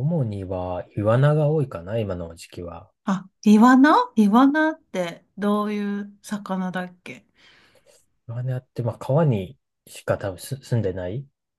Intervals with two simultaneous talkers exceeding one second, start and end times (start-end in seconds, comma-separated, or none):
none